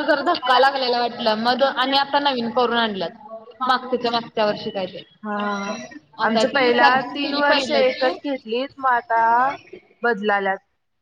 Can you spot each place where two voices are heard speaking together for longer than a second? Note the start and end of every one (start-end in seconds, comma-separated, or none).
6.3-8.1